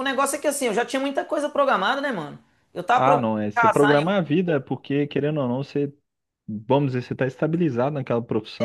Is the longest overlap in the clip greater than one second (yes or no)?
yes